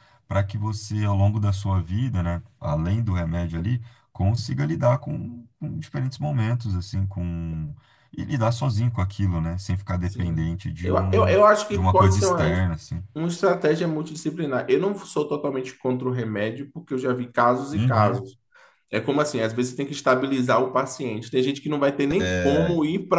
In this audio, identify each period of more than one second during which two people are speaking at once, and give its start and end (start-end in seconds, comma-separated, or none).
10.0-12.5